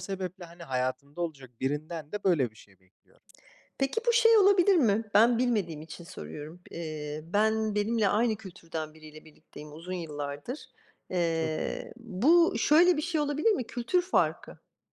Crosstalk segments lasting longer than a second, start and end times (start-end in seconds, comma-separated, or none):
none